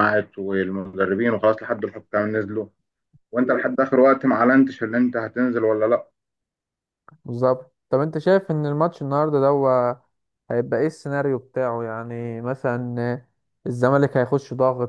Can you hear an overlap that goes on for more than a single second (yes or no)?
no